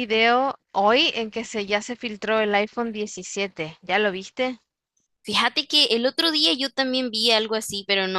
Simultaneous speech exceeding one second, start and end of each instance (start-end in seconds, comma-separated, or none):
none